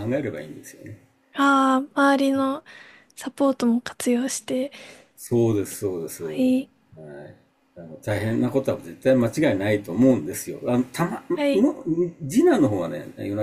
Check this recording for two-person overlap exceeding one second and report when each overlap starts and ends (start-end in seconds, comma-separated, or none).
none